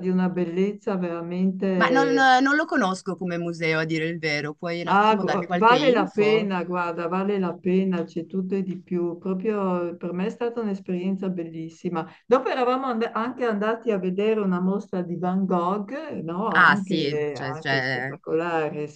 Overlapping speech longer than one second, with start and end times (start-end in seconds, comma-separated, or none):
4.9-6.5, 16.5-18.2